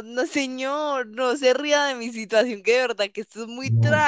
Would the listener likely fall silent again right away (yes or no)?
no